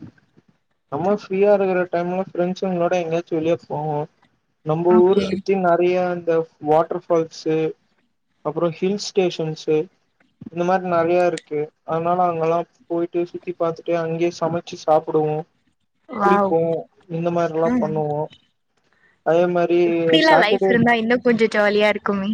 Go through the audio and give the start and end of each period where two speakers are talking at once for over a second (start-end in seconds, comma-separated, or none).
none